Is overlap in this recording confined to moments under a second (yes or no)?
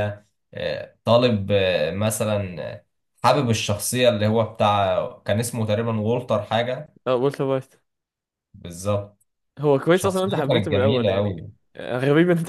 no